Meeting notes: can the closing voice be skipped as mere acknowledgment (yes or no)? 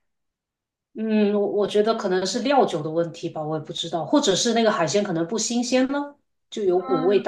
no